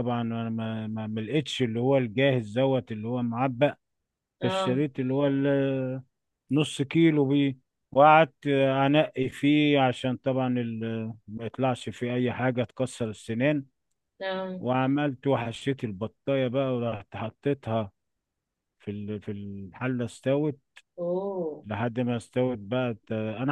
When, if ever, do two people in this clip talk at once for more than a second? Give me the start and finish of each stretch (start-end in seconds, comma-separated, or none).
none